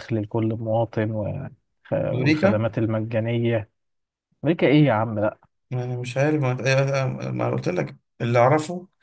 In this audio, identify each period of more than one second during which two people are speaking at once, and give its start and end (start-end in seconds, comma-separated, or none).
none